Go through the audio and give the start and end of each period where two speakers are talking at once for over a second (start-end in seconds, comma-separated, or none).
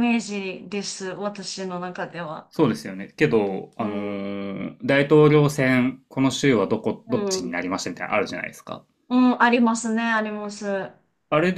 none